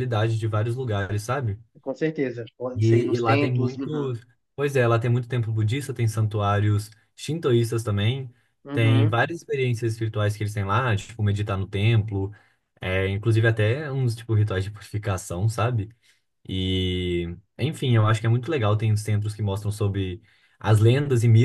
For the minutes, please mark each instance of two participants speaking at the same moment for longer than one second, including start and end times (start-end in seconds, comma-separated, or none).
2.7-4.1